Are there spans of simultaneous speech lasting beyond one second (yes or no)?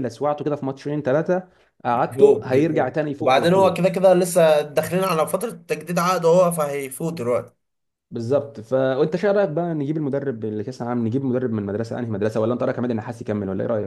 yes